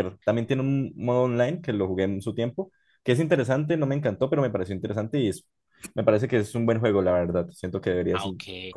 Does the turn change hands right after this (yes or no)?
yes